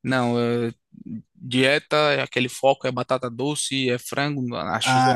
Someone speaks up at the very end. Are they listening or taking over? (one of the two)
taking over